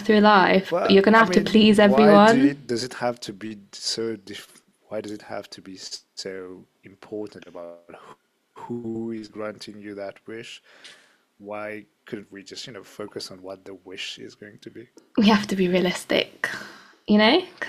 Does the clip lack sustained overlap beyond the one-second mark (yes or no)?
no